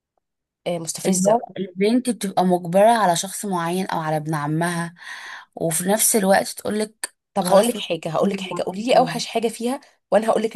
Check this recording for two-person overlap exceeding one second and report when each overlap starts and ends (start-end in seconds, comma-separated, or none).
7.3-9.2